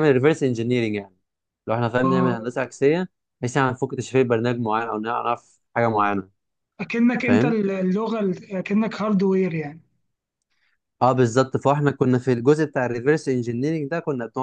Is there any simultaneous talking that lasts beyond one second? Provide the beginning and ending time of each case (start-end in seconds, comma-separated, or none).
none